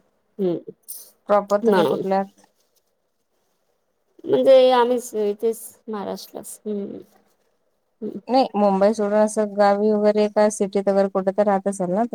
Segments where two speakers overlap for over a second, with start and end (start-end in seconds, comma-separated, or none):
none